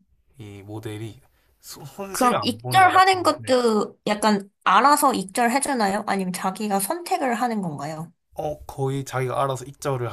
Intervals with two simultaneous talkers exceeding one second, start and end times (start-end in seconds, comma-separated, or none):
2.1-3.6